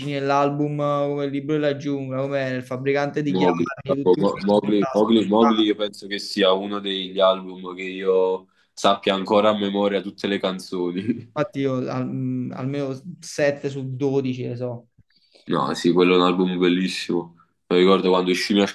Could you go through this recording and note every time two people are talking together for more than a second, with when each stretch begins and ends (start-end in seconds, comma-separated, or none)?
3.3-5.6